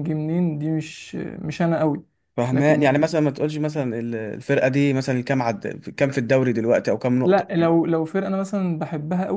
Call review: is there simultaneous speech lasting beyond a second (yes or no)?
no